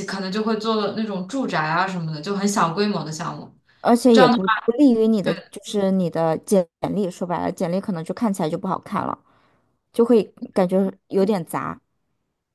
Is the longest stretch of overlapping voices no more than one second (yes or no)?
yes